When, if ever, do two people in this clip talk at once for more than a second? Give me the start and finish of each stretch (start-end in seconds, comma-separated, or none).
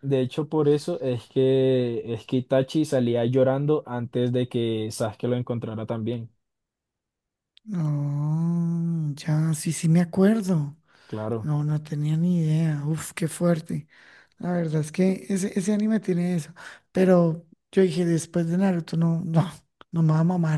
none